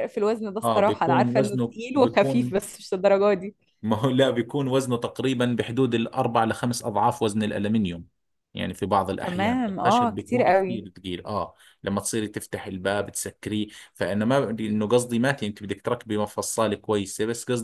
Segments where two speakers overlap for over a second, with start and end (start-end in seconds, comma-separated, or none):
0.6-2.6, 9.2-10.8